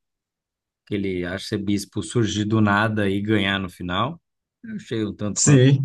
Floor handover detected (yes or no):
yes